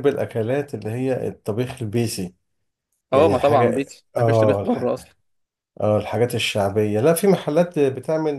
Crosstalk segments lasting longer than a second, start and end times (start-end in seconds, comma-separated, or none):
3.1-4.8